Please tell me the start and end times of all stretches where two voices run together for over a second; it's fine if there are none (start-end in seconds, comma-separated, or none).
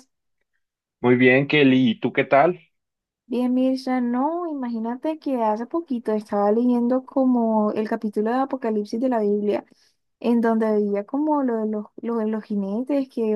none